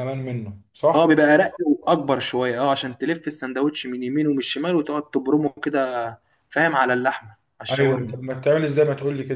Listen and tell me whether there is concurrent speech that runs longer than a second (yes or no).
no